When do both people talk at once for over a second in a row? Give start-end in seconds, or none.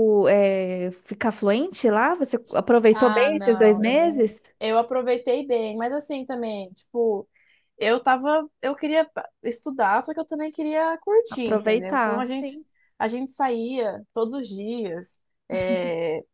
2.9-4.4, 11.3-12.6